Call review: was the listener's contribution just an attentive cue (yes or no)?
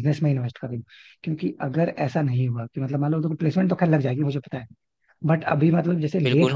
yes